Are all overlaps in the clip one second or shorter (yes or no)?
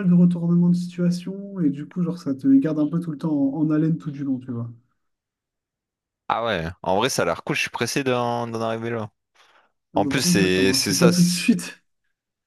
no